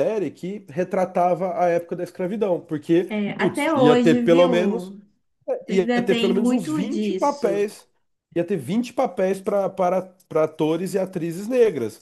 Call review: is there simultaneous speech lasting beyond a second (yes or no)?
yes